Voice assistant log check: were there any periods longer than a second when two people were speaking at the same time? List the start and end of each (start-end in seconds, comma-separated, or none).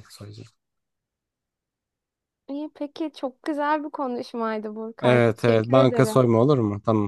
5.0-6.3